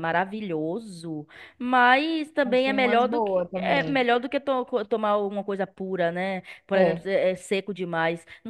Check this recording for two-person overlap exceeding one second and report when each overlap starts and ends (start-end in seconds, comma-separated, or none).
2.4-4.1